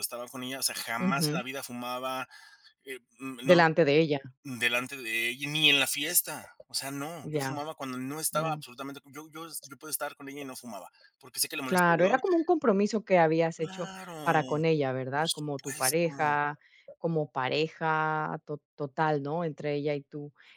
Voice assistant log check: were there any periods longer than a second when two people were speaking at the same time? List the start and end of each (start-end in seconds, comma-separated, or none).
15.1-16.4